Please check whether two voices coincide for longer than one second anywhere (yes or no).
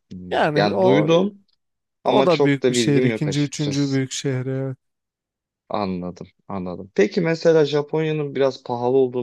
yes